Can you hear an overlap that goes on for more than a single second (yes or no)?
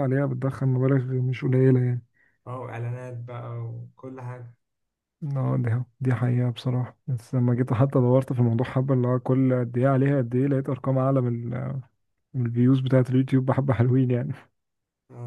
no